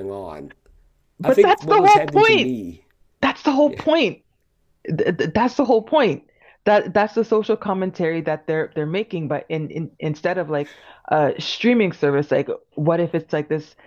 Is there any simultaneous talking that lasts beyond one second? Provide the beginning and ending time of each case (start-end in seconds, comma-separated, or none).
1.2-2.6